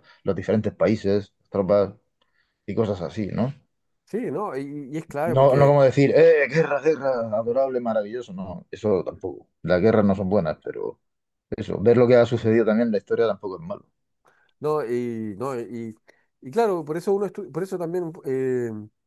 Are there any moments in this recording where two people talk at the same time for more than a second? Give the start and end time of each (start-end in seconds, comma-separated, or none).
none